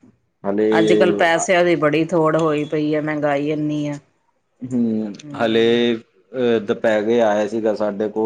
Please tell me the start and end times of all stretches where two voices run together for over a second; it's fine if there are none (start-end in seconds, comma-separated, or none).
none